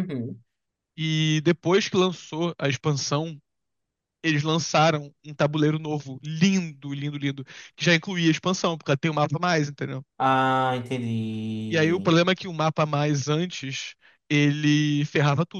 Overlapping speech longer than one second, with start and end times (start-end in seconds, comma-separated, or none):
none